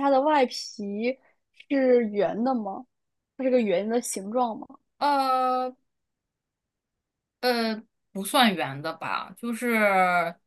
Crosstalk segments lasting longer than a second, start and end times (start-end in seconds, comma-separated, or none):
none